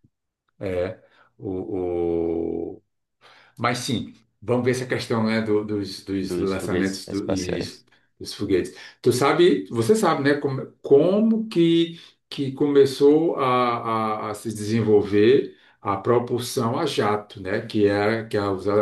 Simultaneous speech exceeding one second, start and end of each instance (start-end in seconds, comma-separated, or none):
6.2-7.6